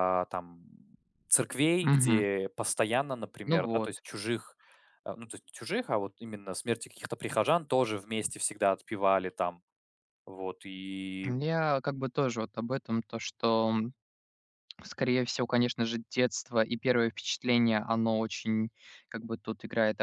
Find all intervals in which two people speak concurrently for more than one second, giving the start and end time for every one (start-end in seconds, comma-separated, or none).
none